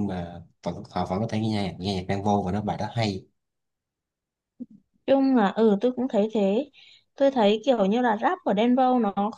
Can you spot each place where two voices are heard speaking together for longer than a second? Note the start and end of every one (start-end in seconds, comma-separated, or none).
none